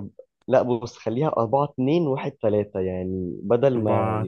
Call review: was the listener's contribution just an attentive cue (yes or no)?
yes